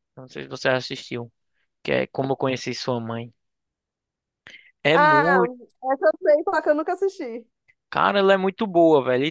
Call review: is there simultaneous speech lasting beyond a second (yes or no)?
no